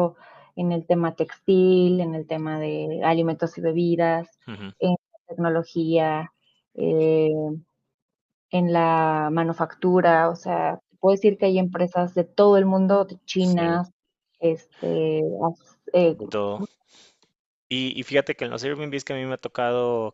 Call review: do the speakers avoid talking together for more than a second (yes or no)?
yes